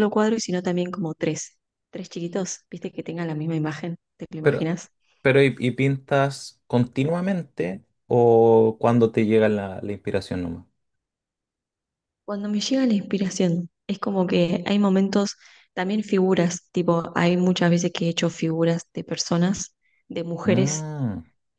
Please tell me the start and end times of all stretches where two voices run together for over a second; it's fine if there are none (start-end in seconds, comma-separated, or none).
none